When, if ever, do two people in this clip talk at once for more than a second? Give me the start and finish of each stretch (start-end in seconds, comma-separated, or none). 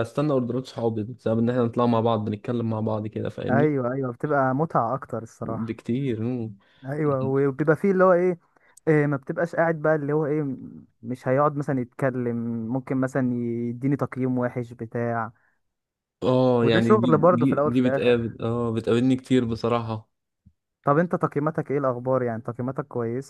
16.6-18.1